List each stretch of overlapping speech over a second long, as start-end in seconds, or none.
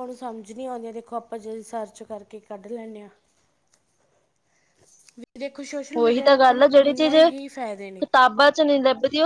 none